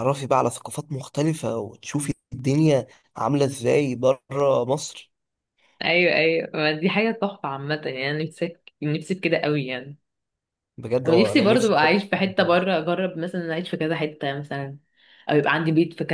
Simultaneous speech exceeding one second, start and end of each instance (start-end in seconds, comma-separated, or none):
11.1-12.7